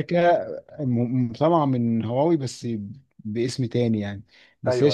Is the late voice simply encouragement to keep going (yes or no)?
yes